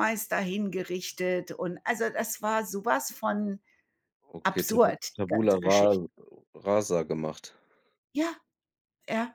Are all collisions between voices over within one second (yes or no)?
no